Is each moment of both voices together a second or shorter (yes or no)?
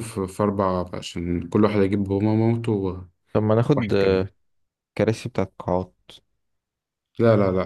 yes